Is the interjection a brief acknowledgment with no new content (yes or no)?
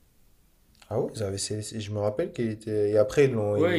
no